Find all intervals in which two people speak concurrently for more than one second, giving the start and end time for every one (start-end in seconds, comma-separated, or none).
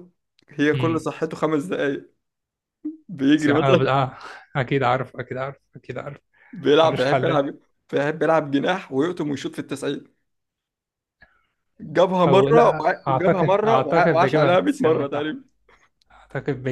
12.3-15.3